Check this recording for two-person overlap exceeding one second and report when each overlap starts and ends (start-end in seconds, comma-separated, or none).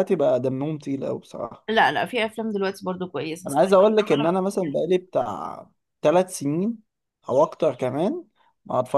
none